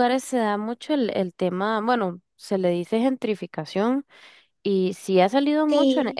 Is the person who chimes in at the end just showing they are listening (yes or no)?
yes